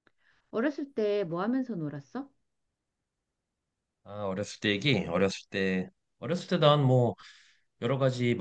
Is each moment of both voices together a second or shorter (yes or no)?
yes